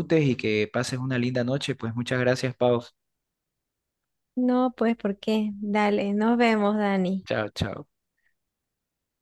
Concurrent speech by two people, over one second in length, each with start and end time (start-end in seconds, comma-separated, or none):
none